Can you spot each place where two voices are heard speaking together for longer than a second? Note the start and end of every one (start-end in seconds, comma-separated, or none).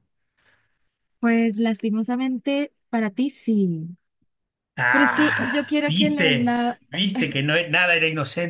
4.9-6.5